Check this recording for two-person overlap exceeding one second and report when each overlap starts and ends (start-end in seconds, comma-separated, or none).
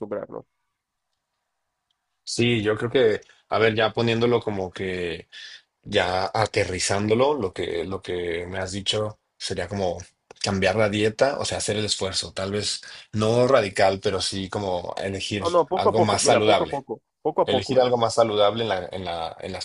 15.4-16.8